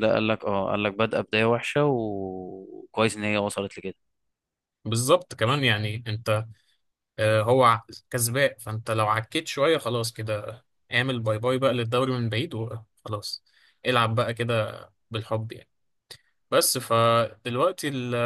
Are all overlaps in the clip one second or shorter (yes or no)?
yes